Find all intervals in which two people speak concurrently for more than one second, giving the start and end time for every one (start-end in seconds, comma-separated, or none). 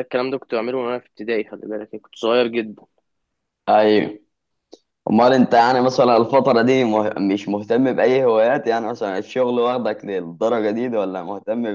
none